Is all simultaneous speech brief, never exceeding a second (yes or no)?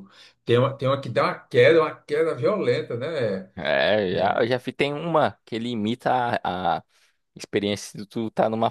yes